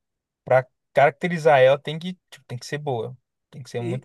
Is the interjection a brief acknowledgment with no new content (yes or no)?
no